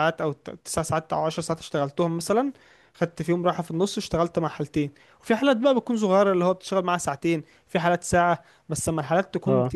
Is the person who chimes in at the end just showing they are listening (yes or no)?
yes